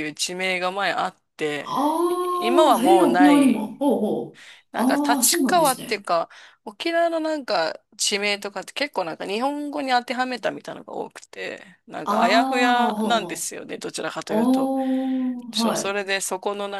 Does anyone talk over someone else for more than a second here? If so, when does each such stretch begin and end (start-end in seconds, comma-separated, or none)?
1.6-3.8, 4.7-6.1